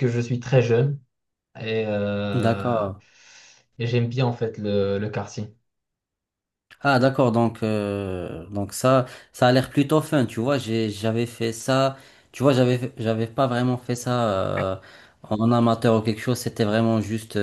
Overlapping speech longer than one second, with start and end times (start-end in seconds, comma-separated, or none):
none